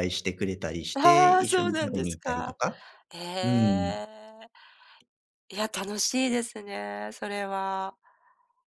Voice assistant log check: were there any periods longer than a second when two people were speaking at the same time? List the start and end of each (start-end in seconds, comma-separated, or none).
0.9-2.6